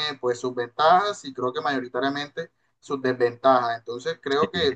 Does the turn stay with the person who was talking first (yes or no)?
yes